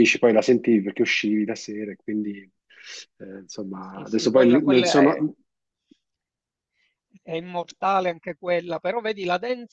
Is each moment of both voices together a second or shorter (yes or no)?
no